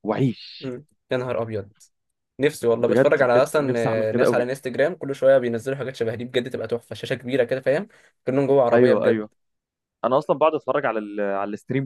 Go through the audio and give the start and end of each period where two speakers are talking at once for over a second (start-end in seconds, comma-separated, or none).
2.8-4.5